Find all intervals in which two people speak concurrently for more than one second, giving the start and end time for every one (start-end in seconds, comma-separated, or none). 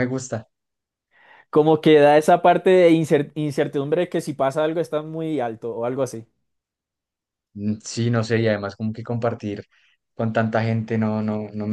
none